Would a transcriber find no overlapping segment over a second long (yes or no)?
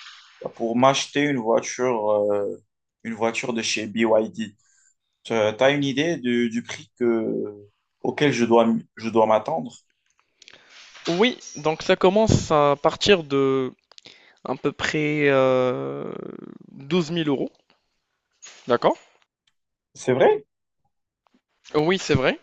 yes